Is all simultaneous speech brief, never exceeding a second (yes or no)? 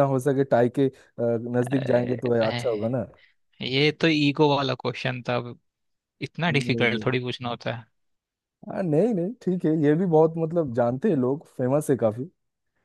no